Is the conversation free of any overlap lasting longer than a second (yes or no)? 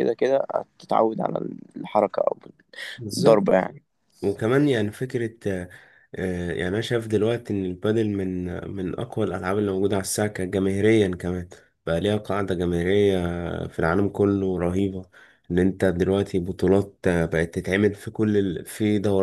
yes